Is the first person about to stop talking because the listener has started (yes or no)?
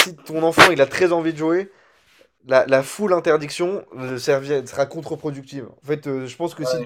no